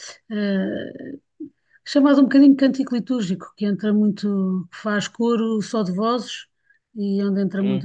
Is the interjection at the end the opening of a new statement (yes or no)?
no